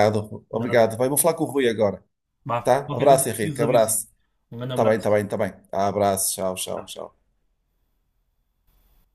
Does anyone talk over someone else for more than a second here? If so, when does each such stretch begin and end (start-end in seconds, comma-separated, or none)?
2.6-3.9